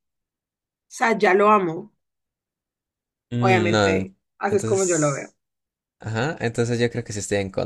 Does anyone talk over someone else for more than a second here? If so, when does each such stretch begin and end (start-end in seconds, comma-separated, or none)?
3.4-5.3